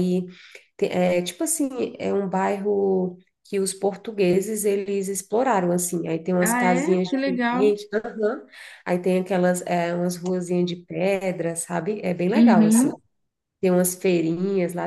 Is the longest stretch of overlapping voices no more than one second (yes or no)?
no